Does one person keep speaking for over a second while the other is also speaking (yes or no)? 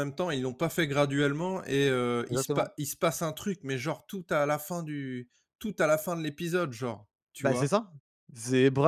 no